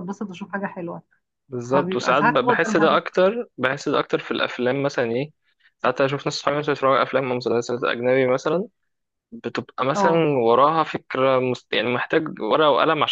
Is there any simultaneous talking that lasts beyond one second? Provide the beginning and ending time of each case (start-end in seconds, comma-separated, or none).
1.7-3.0